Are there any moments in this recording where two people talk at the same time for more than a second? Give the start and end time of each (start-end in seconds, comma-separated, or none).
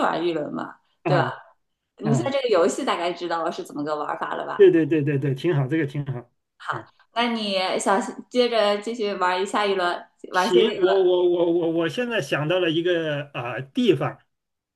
none